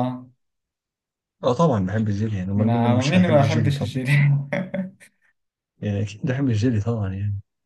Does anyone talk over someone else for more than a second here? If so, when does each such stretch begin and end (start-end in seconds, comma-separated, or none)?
2.6-4.0